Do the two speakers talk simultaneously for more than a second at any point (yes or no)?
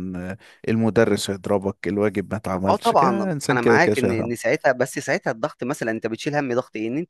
yes